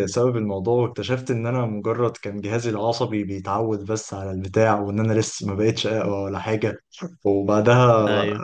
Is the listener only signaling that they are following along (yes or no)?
no